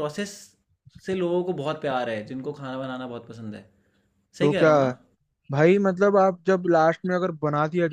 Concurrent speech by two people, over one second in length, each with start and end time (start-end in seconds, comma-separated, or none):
none